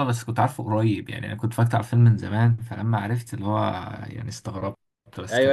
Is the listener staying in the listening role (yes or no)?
no